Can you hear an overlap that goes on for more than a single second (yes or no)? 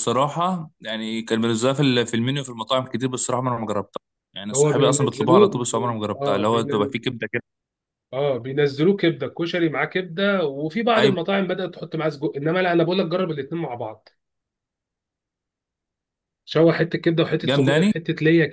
yes